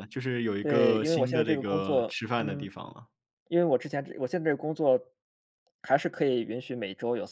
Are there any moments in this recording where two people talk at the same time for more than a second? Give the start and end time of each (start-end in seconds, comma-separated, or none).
0.6-2.7